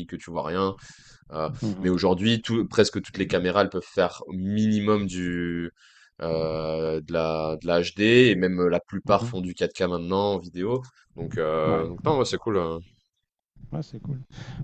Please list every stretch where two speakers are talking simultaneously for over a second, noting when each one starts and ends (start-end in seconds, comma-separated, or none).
none